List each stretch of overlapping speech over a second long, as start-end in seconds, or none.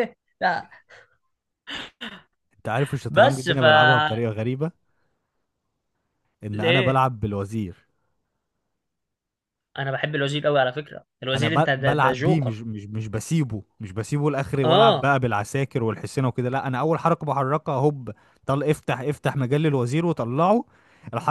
11.3-12.6